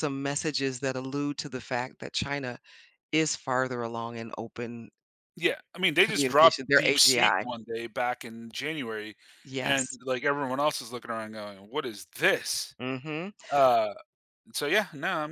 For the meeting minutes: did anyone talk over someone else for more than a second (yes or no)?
yes